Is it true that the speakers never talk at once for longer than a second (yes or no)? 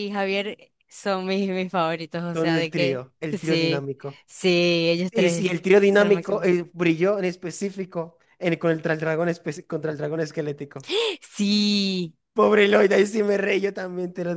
no